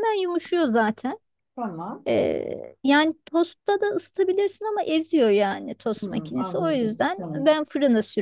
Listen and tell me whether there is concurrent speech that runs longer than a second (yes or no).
yes